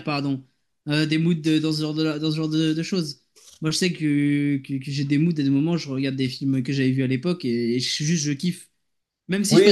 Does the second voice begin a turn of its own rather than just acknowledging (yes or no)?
yes